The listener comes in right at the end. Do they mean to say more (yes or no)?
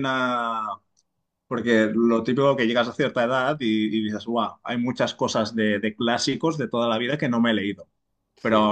no